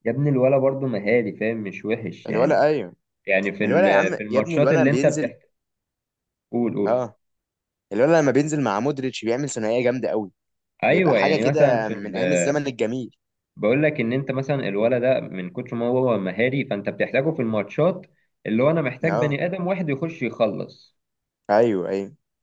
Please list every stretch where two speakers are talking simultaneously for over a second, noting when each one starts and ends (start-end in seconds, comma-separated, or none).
3.6-5.3, 10.9-12.5